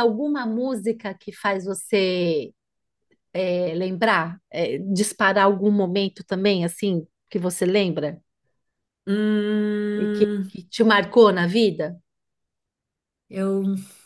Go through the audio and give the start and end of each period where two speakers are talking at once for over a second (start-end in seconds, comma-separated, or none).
none